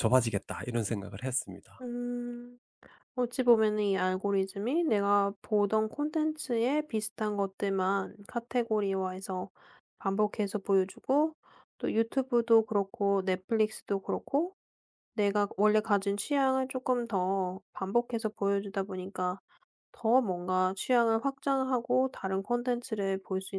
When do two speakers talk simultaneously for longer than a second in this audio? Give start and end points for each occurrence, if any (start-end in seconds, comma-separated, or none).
none